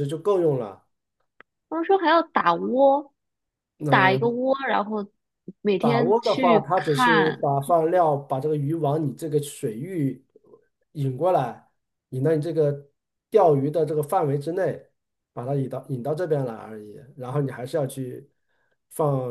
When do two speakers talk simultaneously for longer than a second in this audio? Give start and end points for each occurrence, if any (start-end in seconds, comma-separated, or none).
5.8-7.5